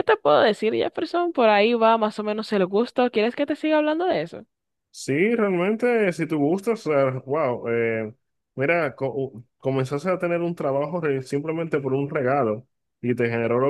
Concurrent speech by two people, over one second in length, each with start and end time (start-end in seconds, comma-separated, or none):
none